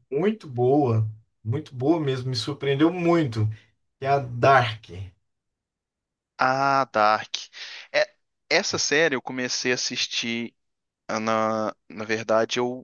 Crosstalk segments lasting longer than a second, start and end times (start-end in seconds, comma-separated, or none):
none